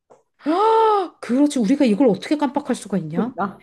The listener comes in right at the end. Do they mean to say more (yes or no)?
no